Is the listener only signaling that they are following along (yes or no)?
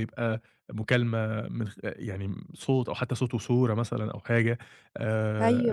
yes